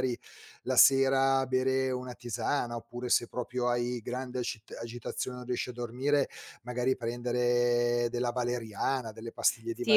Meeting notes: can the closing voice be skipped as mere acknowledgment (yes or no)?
no